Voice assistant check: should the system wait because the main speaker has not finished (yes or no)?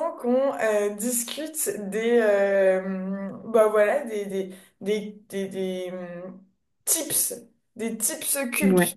yes